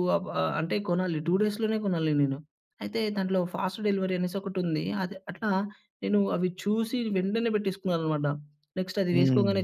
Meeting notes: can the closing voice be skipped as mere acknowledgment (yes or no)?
yes